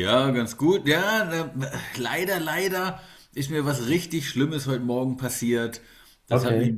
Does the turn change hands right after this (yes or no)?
no